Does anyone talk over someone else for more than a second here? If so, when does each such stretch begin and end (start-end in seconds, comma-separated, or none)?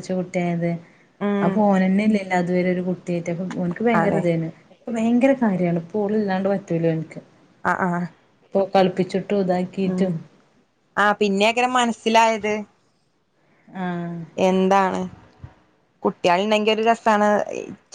none